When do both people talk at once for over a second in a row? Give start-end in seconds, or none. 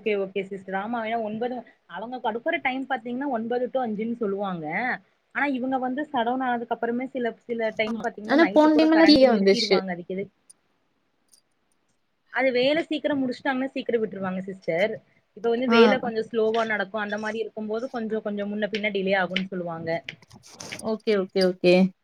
8.3-9.8